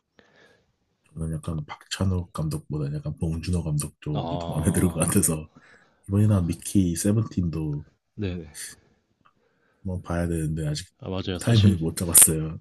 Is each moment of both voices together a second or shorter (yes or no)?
yes